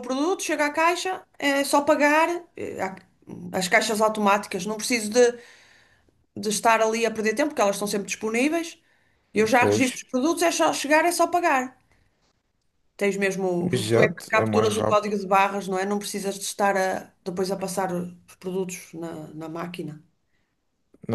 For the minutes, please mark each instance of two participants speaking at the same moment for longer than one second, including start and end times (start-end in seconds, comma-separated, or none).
13.7-15.1